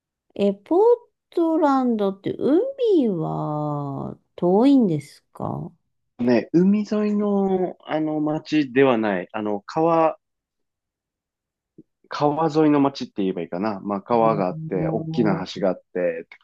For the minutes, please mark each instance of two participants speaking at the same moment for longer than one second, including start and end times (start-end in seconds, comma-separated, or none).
14.2-15.5